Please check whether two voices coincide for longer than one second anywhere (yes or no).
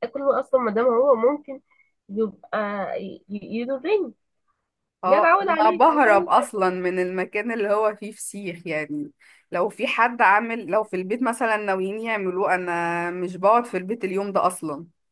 yes